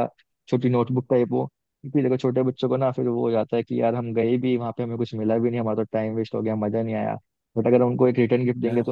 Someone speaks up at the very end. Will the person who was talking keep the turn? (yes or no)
yes